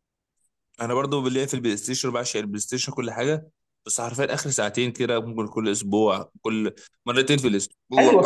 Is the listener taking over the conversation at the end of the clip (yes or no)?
yes